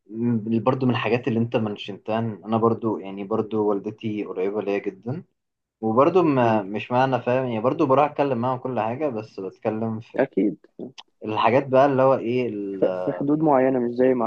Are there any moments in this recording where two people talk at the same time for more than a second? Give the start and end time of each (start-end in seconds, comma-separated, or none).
none